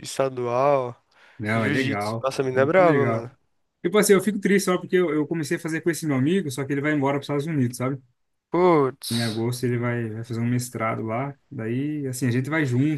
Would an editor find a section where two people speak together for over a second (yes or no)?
yes